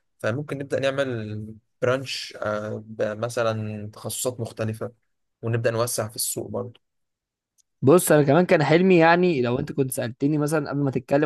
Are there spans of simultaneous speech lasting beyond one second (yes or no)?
no